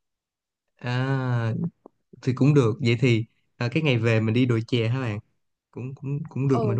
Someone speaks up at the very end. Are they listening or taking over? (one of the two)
taking over